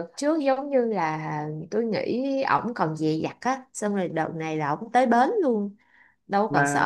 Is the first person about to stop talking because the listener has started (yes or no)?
yes